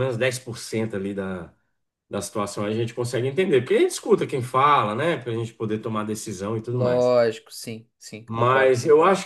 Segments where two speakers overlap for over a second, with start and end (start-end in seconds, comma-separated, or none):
none